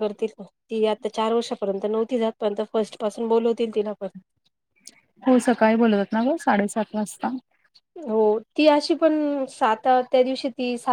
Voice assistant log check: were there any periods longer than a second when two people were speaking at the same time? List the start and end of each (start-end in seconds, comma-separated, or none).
none